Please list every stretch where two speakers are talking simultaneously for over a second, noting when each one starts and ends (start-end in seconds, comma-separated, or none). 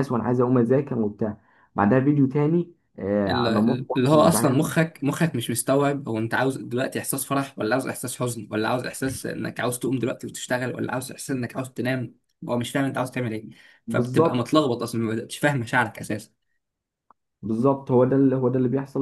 3.3-4.7